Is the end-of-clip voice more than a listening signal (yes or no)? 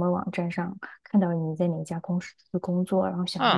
no